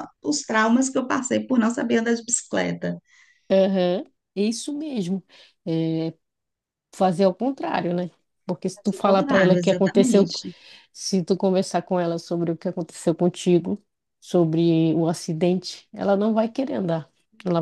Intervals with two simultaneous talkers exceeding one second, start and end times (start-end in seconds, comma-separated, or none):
8.8-10.3